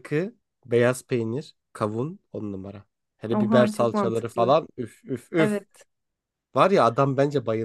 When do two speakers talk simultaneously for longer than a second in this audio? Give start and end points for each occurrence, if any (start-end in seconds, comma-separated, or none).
3.3-4.6